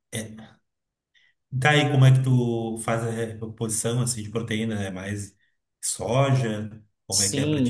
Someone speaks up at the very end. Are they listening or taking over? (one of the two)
taking over